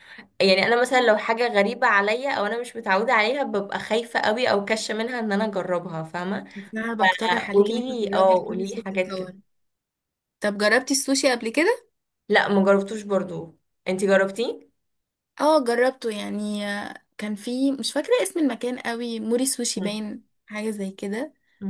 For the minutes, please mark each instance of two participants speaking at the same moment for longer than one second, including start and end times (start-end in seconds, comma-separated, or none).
7.3-9.3